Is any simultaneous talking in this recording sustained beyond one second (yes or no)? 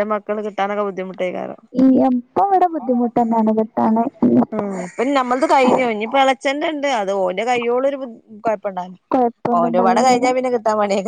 no